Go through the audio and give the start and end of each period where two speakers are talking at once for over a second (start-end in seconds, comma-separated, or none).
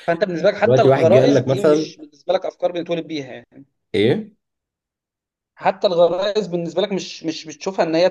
0.6-1.9